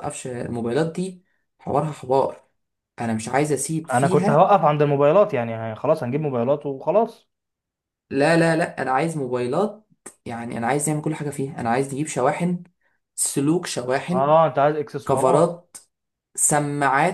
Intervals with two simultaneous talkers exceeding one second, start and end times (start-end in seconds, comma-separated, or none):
none